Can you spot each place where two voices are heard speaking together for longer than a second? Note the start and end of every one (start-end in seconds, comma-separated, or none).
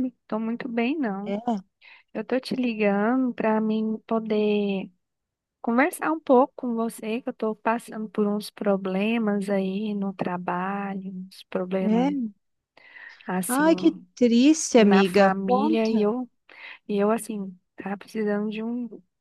14.8-16.1